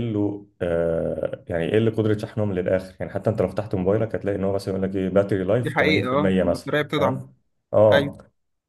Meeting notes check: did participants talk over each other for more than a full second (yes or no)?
yes